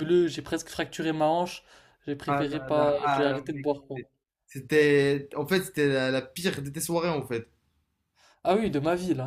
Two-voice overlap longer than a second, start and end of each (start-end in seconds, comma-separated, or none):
2.3-4.0